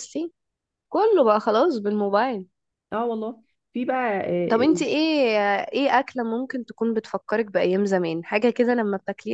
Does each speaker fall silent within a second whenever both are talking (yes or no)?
yes